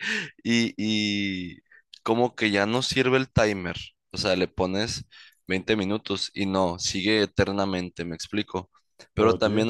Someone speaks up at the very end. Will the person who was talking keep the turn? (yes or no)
yes